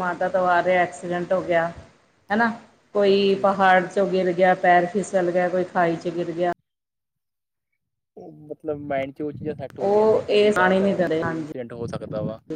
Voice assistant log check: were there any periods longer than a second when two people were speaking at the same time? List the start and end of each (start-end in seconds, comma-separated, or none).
9.8-11.5